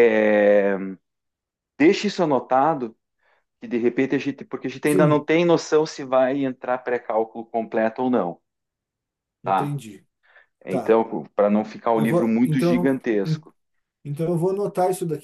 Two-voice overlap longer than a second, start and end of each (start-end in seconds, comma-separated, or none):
11.9-13.4